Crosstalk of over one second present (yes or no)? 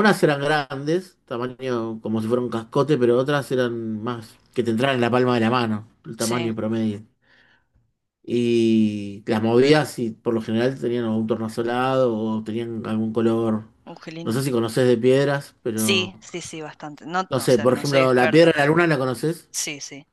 yes